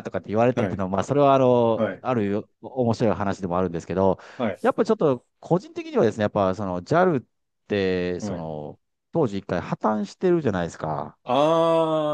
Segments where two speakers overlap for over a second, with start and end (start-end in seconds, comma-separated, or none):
none